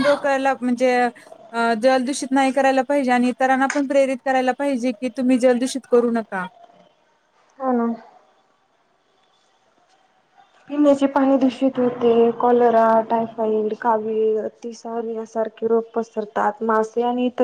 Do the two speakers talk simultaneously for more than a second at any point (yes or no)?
no